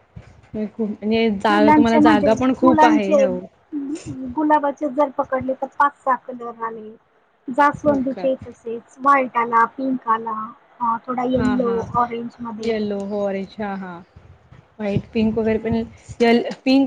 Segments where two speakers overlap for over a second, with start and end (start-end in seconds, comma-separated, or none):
1.5-3.3